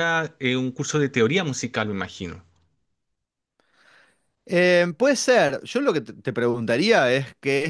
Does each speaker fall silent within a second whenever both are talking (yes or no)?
yes